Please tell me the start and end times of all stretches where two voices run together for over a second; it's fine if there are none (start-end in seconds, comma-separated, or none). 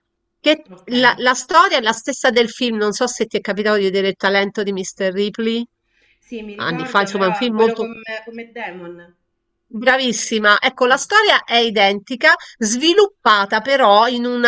6.5-7.9